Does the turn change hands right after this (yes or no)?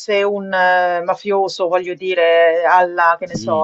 yes